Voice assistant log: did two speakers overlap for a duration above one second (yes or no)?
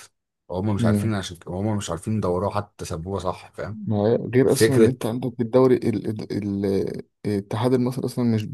no